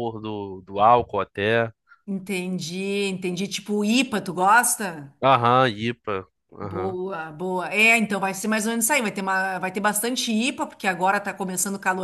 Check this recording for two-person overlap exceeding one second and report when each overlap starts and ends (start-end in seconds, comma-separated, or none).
none